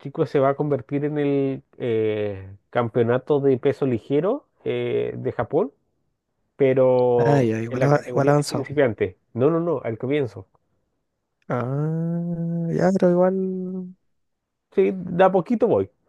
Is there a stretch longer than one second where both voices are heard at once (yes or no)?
yes